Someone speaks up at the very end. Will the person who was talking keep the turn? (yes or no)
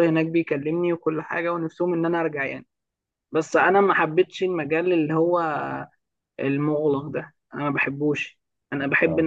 yes